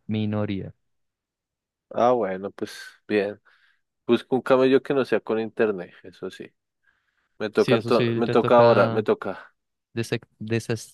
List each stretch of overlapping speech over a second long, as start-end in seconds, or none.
7.5-9.1